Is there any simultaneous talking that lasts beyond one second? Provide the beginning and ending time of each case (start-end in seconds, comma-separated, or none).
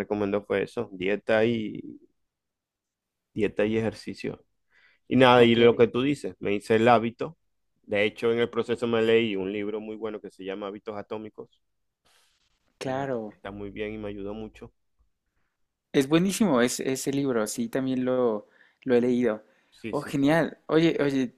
none